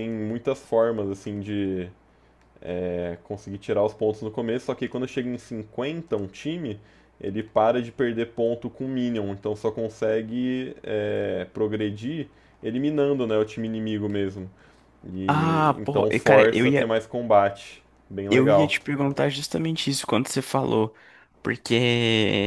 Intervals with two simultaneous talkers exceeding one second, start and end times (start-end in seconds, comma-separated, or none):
15.3-16.9